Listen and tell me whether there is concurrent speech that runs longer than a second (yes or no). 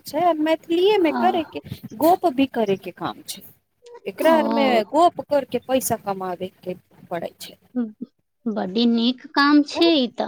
no